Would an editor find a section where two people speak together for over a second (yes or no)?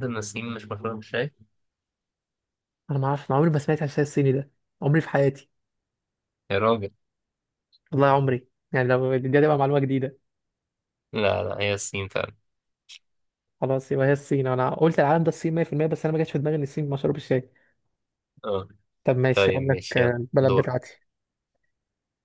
yes